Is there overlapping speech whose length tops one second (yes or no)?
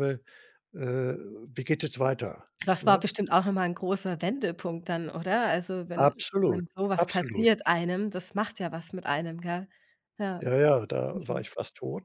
yes